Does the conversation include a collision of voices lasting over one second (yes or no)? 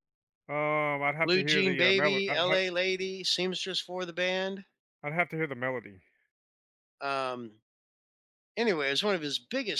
yes